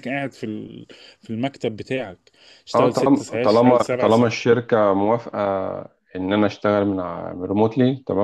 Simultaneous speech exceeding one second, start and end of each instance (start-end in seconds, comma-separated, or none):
2.7-4.4